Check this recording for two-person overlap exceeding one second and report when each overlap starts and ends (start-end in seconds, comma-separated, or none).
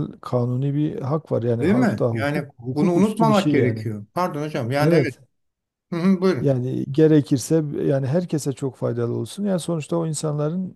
1.6-3.9